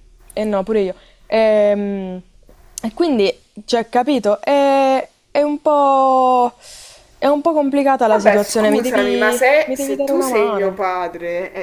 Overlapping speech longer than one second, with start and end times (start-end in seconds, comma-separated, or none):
8.1-10.9